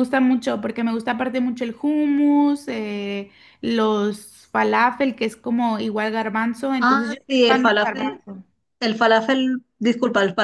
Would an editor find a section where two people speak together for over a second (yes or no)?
yes